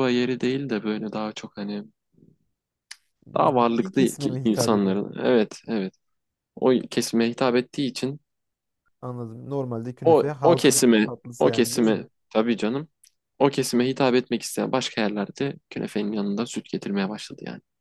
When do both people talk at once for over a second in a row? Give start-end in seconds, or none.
3.6-5.0, 10.0-12.1